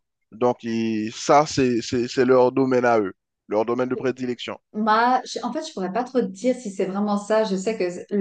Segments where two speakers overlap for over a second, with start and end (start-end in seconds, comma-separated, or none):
none